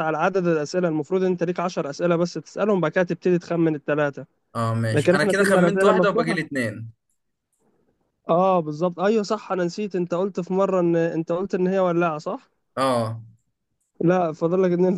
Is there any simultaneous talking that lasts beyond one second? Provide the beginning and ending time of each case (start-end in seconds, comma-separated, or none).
4.9-6.4